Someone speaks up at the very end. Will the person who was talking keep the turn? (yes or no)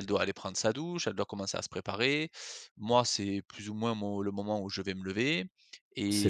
no